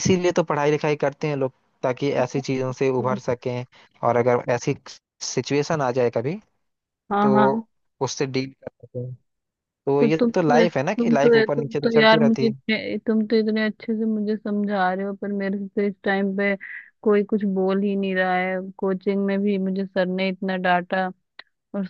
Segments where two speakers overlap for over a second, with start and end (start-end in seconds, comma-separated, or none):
10.0-12.6